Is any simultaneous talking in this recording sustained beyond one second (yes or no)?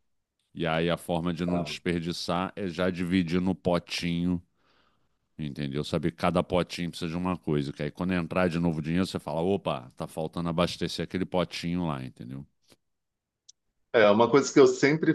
no